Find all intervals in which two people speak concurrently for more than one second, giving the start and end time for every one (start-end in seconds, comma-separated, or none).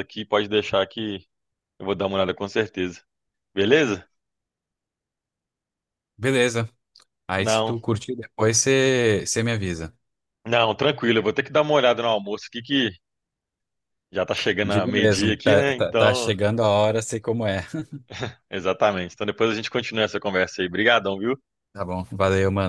14.6-16.3